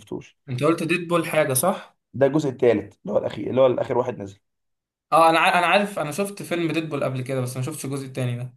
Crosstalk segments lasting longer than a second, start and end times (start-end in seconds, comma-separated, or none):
none